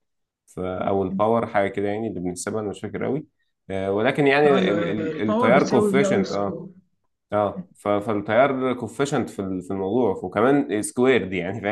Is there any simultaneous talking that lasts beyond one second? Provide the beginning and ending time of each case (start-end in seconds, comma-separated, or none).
4.5-6.6